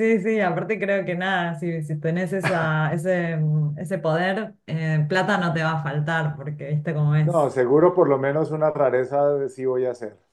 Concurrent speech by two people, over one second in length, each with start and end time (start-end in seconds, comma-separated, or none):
none